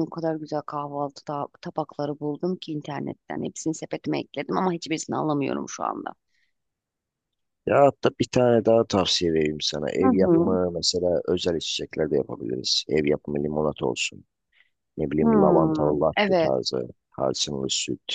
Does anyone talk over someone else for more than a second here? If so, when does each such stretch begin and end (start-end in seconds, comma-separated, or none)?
none